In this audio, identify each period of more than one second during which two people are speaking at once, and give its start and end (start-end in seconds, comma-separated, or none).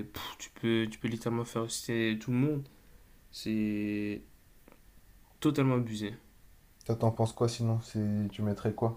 none